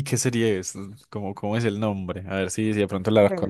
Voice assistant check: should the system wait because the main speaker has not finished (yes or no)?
no